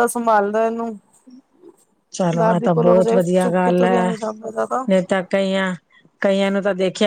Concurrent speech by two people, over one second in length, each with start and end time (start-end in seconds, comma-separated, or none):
2.4-4.1